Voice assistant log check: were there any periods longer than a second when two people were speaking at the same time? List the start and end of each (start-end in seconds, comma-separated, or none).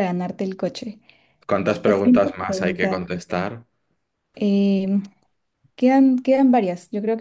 1.8-3.1